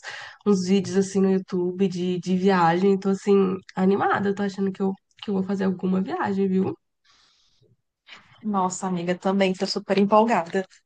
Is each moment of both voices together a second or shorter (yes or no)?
yes